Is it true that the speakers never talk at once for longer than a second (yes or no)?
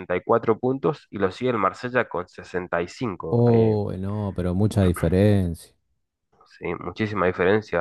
yes